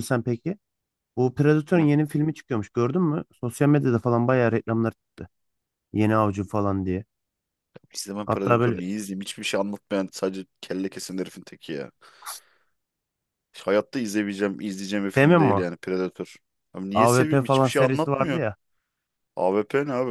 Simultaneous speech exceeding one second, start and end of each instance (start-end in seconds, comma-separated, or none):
16.9-18.4